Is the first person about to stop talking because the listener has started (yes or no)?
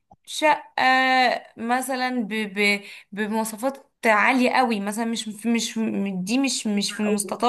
no